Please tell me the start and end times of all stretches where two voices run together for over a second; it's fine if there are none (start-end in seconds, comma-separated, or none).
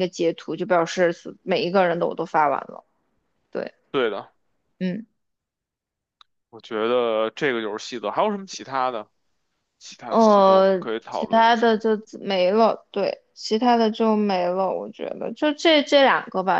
10.1-11.8